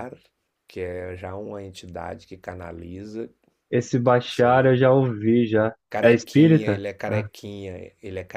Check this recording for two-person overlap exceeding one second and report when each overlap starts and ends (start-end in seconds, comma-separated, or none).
5.9-7.3